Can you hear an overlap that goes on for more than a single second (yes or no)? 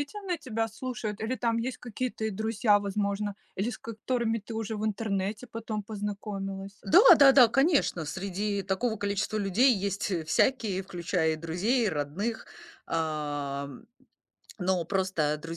no